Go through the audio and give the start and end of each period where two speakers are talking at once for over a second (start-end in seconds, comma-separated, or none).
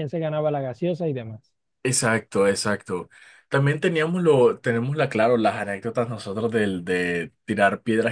none